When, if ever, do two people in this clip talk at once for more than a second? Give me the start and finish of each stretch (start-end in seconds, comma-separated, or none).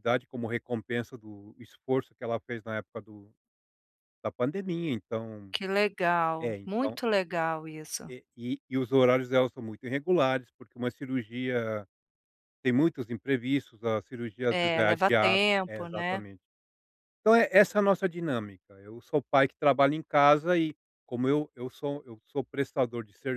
14.5-16.2